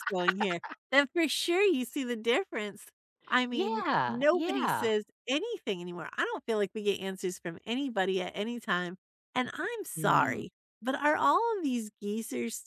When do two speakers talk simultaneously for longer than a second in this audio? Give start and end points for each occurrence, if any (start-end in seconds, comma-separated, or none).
3.5-4.9